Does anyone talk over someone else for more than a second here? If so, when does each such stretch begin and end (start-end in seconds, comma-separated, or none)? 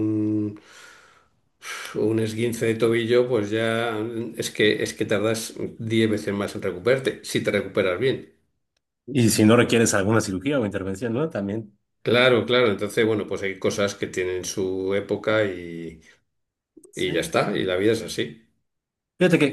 none